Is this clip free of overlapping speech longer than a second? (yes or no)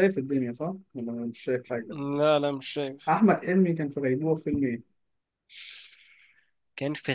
yes